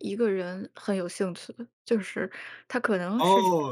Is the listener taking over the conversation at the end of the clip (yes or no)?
yes